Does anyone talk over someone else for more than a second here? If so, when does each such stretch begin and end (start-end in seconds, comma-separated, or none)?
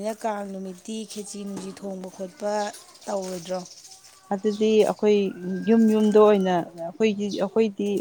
none